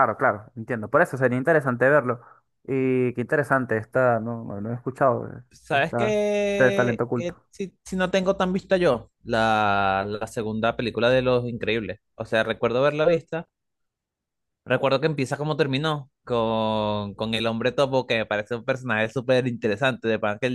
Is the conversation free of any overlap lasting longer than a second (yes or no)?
no